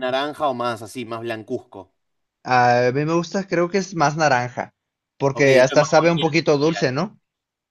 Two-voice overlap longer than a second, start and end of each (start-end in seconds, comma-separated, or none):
5.3-6.8